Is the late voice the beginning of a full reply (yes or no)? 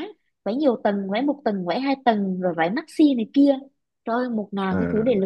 no